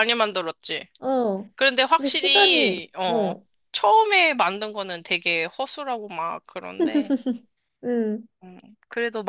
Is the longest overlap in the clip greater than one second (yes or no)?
yes